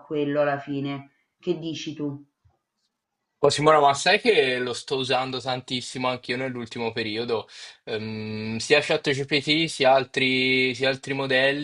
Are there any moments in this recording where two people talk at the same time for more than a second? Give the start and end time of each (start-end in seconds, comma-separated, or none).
none